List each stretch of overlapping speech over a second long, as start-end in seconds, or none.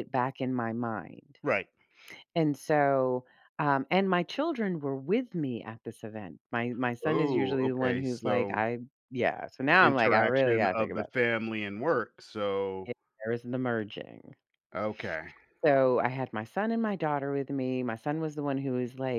7.0-8.6, 9.7-11.1